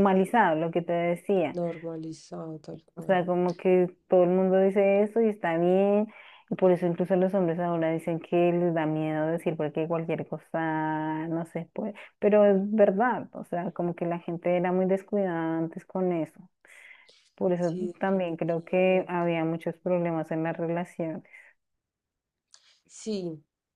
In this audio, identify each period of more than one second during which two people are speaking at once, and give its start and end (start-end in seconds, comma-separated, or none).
17.6-19.3